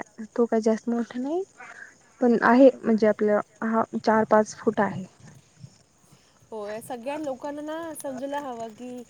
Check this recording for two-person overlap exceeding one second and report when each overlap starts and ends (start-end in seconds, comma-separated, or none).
none